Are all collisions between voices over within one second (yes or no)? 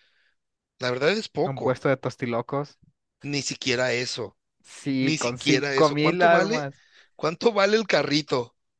no